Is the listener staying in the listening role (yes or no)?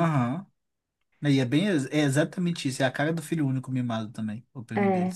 no